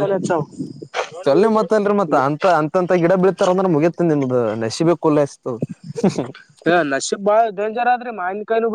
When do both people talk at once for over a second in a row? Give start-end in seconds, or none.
none